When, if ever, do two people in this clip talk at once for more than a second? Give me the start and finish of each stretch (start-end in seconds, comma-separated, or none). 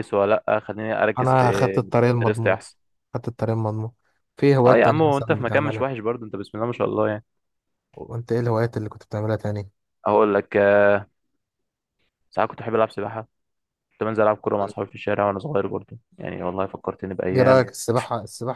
4.7-5.9